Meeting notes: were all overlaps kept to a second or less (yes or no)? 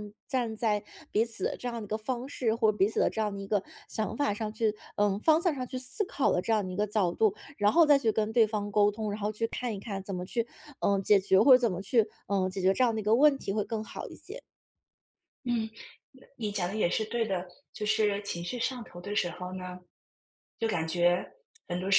yes